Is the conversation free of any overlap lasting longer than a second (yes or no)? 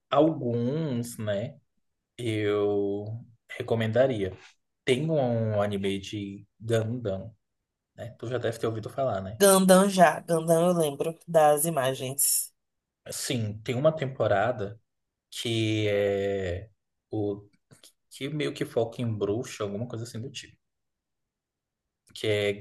yes